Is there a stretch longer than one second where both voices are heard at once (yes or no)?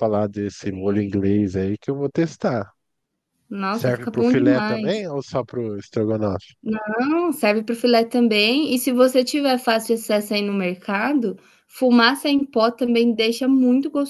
yes